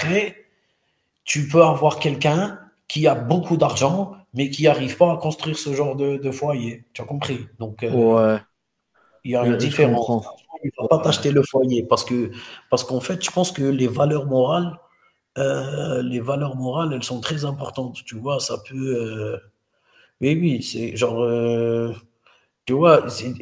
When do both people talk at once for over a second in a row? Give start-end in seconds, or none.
9.4-10.9